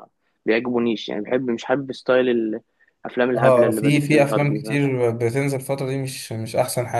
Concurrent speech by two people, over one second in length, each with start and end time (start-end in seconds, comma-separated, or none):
3.3-4.8